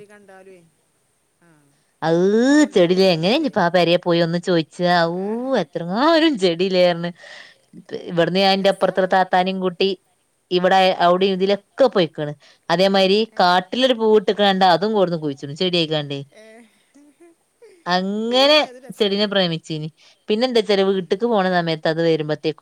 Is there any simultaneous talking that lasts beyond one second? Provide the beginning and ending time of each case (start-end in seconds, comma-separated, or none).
none